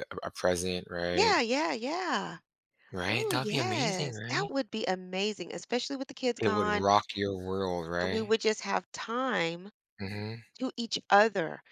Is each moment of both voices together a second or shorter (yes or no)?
no